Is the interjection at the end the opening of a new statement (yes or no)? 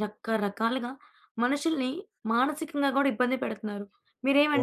no